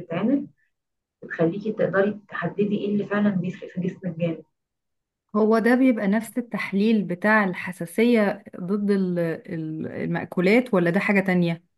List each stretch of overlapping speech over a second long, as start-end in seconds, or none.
none